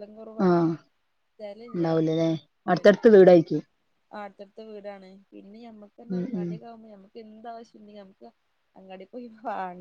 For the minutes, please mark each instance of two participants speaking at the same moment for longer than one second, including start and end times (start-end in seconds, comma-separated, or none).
none